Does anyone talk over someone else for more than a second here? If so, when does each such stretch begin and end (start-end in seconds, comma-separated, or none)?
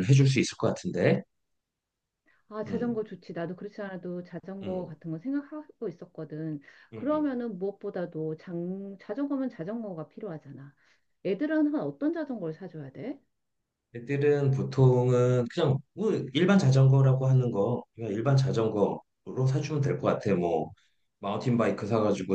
none